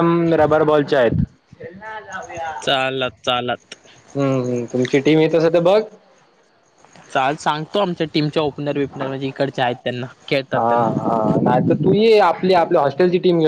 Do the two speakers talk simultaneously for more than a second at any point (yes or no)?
no